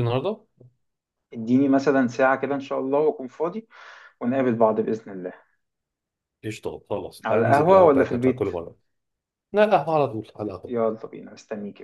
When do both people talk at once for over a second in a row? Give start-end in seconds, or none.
7.2-8.5